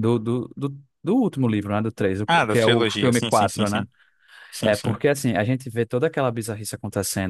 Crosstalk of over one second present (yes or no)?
yes